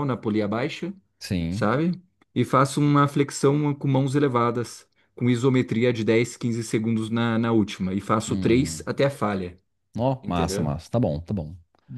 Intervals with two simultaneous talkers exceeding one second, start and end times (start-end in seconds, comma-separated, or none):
none